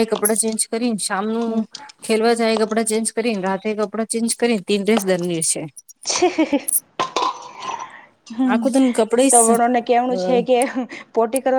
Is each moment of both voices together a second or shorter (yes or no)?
yes